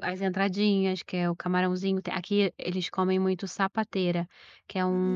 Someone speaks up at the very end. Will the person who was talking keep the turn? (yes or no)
yes